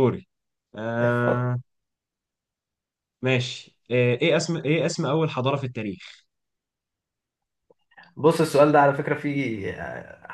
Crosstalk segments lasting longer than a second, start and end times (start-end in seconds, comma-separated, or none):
none